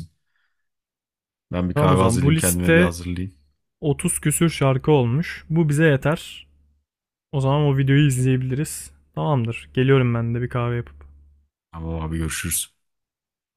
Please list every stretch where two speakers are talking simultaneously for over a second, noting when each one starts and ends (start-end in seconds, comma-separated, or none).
1.7-2.9